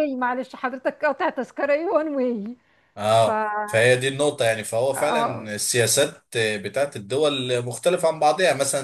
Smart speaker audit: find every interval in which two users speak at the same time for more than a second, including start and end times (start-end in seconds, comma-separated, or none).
none